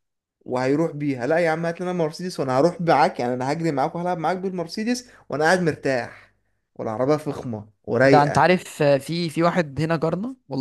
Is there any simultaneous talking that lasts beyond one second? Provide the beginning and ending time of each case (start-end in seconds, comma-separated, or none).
none